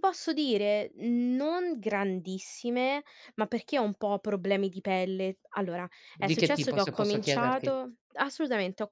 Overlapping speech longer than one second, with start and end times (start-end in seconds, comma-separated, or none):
6.1-7.7